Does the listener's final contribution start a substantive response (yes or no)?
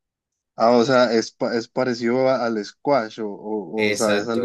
yes